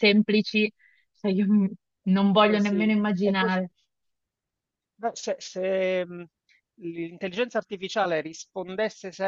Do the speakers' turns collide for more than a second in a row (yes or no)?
yes